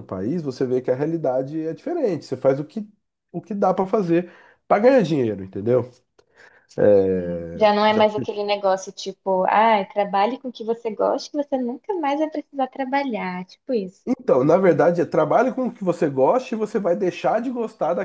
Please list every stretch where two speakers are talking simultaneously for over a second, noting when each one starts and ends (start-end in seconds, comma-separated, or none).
none